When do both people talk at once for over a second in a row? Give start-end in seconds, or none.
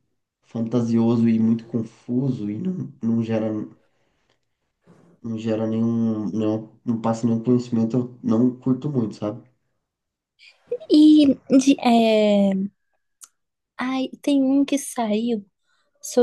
none